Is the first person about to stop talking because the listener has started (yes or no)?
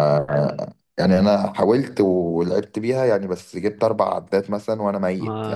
yes